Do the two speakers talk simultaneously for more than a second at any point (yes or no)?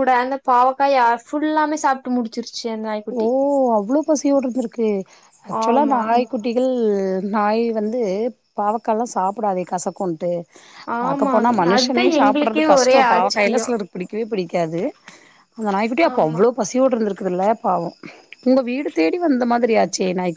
yes